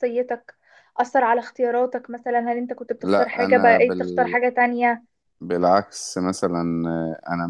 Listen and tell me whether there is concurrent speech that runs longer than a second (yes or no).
yes